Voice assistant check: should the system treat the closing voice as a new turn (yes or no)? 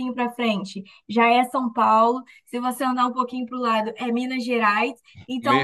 no